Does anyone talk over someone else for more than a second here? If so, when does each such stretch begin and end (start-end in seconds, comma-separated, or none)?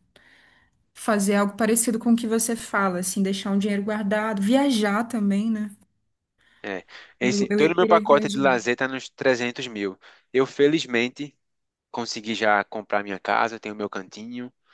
7.3-8.6